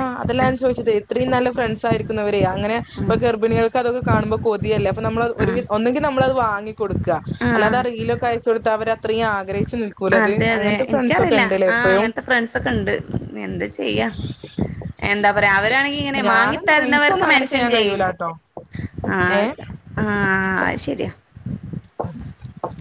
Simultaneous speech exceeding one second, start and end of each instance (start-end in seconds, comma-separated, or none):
16.3-17.9